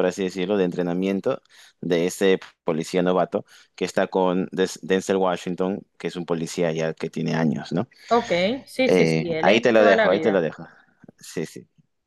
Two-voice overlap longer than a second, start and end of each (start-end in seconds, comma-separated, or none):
8.8-10.4